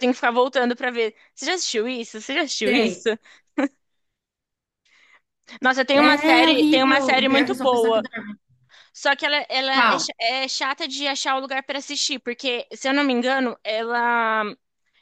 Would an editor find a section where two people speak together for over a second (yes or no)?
yes